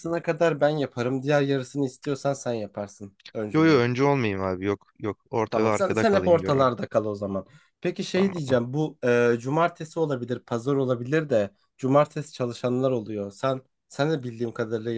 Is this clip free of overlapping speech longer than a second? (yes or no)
no